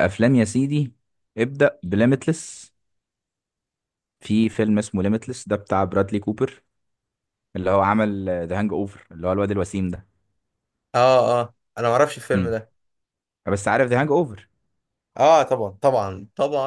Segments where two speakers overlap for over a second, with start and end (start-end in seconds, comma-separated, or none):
none